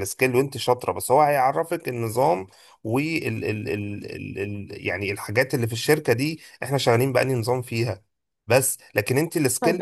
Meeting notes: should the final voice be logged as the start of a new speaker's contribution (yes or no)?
yes